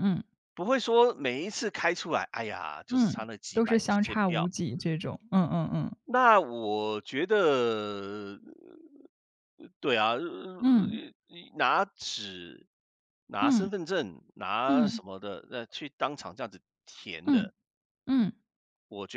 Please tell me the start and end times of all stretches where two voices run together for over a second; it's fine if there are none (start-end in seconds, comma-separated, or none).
2.9-4.5